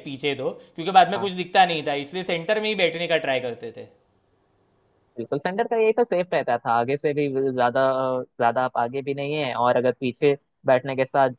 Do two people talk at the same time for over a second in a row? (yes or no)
no